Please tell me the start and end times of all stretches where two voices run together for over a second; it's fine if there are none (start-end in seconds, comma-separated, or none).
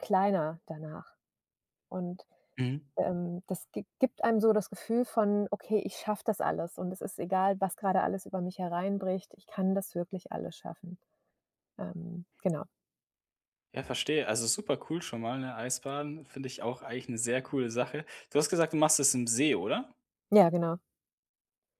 none